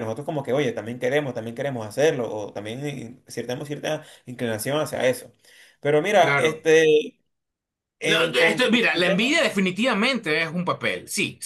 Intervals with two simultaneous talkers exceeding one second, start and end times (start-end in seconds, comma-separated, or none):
8.0-9.4